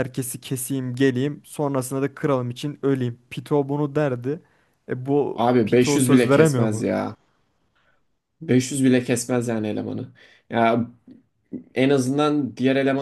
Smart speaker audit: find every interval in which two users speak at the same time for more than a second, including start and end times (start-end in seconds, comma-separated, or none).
5.3-6.8